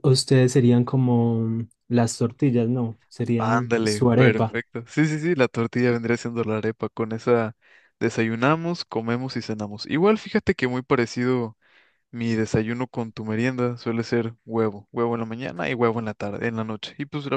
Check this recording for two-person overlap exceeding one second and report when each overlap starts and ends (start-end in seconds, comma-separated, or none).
3.4-4.6